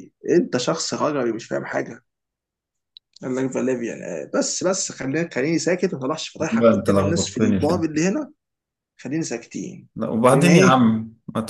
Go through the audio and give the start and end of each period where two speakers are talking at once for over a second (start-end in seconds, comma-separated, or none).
6.5-7.9